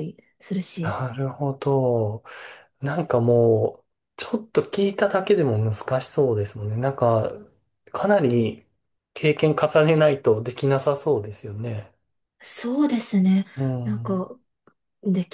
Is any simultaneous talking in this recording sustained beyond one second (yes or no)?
no